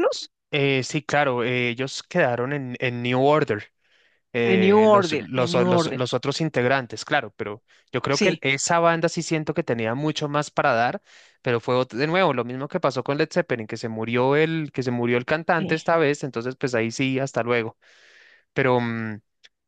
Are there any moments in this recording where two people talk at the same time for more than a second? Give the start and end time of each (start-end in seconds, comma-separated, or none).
4.4-6.0